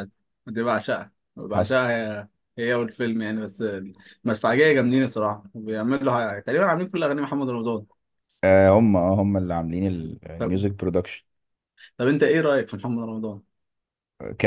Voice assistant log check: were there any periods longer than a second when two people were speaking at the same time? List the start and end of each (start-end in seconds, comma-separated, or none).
none